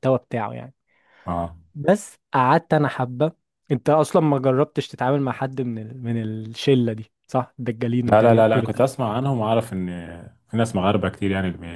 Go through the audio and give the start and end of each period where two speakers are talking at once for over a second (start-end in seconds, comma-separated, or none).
none